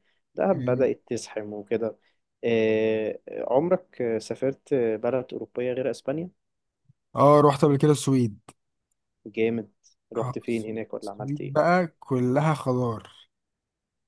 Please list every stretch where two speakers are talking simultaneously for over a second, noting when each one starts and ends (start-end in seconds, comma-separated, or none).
10.1-11.6